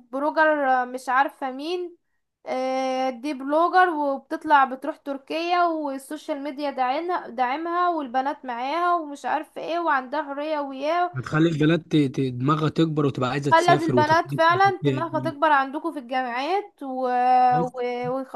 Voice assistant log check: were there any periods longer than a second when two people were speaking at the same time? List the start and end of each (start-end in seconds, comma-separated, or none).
13.5-15.4